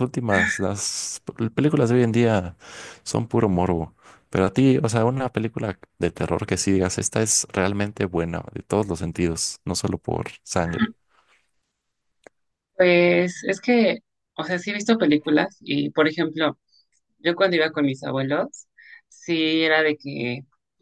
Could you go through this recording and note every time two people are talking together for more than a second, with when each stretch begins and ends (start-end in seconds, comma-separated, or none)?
none